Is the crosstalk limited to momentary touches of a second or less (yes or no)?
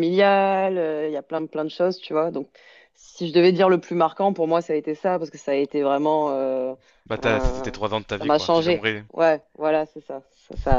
no